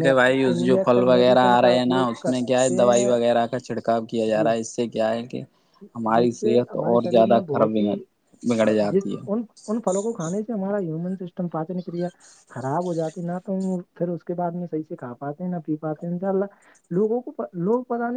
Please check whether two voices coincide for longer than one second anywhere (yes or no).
yes